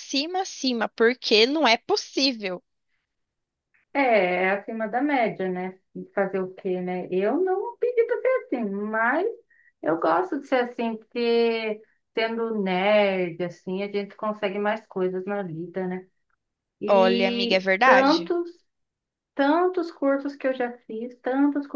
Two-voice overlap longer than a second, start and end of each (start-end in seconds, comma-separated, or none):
16.9-18.3